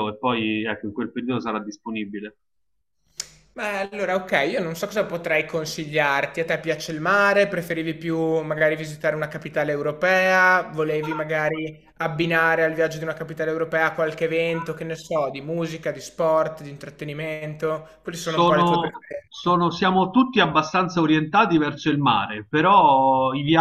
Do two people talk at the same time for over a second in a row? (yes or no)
yes